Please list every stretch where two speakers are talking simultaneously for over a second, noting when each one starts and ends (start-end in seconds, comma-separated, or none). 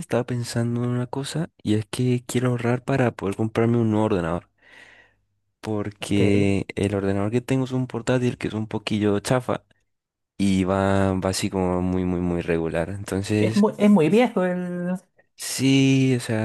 none